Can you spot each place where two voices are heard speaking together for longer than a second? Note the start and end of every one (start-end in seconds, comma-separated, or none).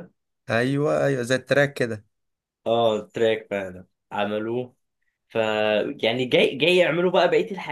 none